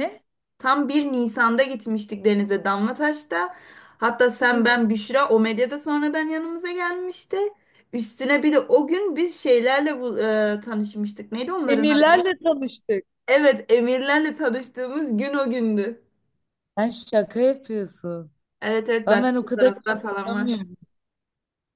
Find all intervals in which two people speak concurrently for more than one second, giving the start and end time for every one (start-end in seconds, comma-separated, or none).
19.1-20.6